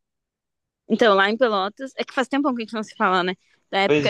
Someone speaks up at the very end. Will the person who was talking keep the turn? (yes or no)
yes